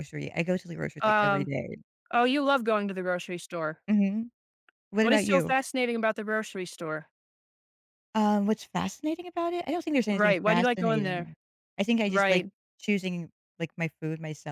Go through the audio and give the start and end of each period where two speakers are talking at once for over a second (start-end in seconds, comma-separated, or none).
10.1-11.3